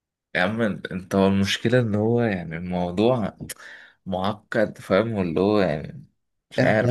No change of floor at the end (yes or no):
no